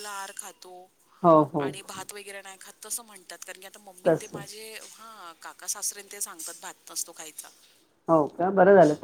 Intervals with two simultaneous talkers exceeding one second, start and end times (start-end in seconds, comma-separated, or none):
none